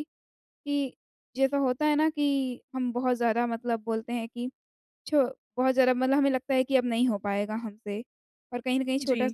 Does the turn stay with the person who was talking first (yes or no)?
yes